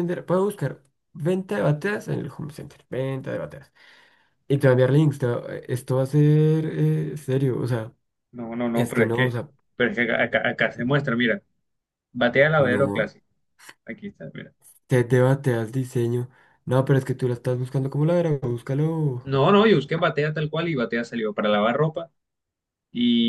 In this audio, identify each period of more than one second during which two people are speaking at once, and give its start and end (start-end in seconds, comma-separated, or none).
none